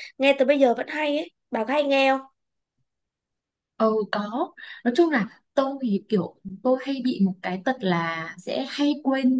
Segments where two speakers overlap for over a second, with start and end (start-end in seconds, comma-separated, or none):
none